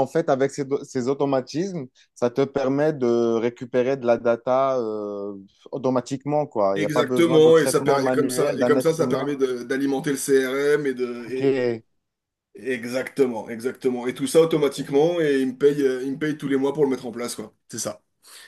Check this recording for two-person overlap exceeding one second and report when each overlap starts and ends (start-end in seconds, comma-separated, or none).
6.7-9.3